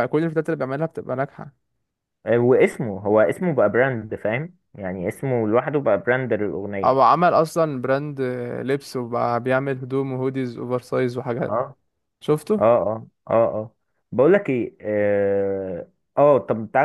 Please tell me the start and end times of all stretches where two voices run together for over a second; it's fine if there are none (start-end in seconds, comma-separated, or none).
none